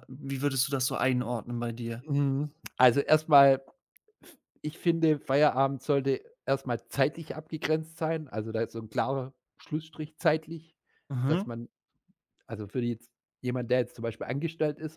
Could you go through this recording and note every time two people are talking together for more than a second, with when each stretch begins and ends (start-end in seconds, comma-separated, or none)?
none